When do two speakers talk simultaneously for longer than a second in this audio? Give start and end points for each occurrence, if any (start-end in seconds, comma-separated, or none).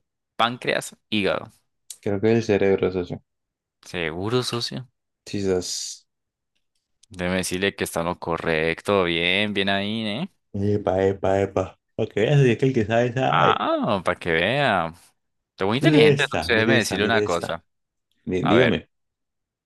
15.8-17.6